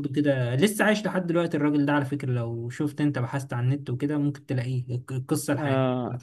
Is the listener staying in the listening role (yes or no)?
no